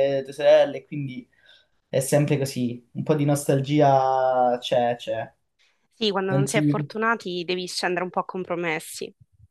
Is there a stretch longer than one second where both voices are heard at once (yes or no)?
no